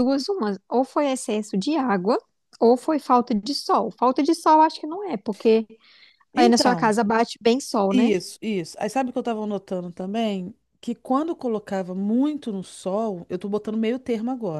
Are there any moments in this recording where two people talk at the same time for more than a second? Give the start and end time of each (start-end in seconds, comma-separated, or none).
none